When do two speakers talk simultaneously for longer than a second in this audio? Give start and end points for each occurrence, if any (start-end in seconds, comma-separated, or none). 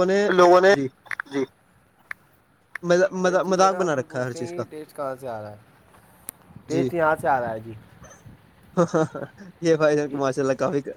3.2-4.6